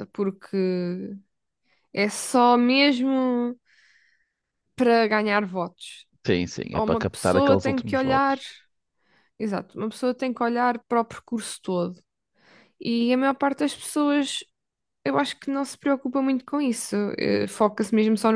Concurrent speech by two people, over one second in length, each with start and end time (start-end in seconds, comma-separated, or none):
6.7-8.4